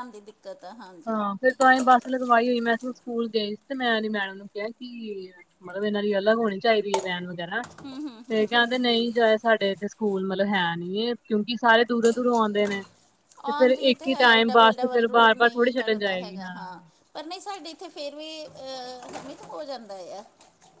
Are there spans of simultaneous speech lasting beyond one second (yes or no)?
yes